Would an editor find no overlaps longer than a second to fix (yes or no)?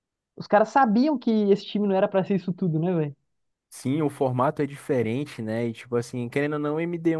yes